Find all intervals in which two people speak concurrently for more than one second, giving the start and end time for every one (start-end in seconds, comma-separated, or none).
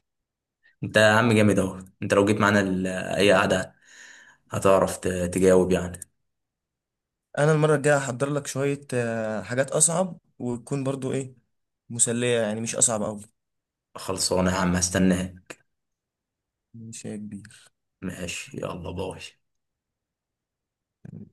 none